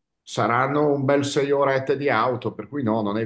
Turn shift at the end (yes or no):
yes